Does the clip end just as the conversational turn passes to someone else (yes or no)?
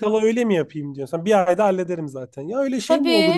yes